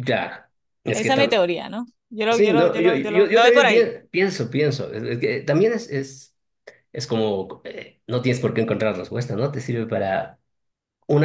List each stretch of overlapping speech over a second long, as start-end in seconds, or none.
2.3-3.9